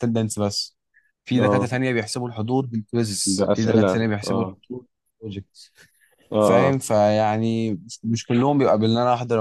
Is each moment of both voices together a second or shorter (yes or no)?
no